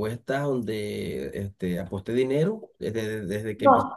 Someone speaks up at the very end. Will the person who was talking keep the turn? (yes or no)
no